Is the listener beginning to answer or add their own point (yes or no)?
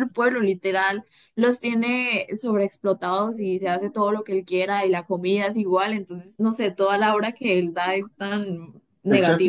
yes